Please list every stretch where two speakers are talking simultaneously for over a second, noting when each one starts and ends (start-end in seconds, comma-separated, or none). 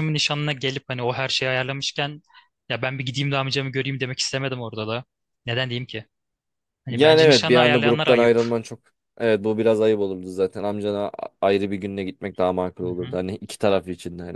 6.9-8.3